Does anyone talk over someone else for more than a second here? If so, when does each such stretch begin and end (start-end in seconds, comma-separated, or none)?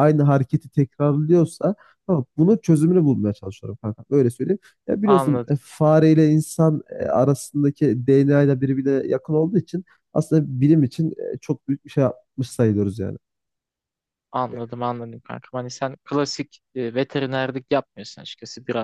none